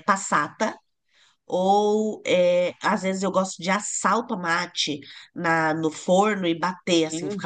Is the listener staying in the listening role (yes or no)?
no